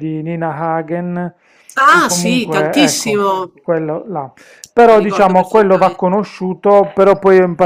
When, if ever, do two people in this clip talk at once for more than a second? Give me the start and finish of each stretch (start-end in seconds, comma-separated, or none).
1.9-3.2, 4.9-6.2